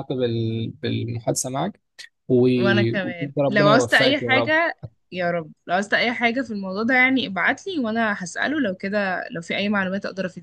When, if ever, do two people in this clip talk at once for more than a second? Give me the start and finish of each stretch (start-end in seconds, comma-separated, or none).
2.6-4.6